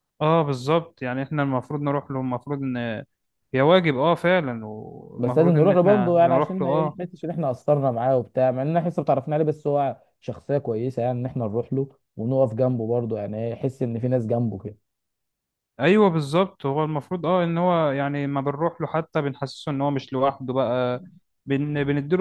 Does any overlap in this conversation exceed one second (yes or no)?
yes